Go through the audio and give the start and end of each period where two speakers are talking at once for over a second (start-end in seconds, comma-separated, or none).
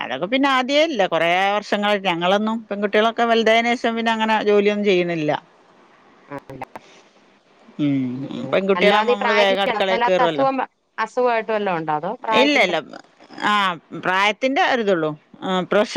8.5-10.4